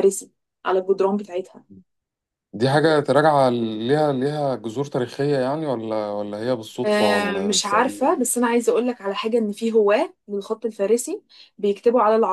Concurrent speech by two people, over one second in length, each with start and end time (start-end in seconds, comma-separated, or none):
6.8-8.2